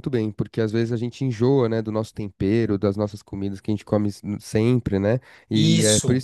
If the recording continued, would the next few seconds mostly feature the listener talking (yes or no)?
no